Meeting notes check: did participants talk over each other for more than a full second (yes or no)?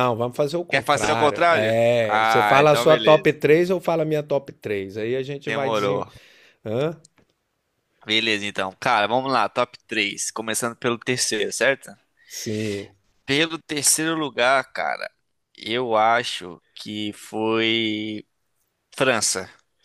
yes